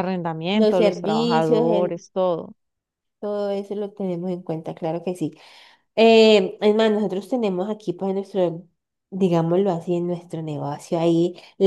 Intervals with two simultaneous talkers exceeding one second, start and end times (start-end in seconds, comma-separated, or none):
0.5-2.0